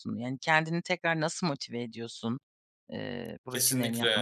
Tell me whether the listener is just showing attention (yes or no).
no